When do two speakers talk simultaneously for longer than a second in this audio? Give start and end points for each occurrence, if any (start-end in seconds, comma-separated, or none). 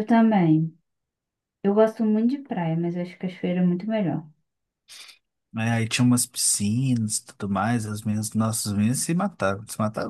none